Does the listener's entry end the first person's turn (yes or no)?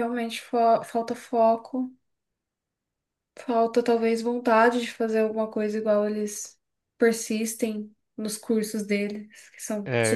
yes